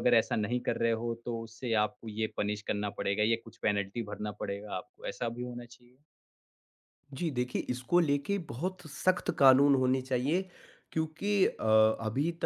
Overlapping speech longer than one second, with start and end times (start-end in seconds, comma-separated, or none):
none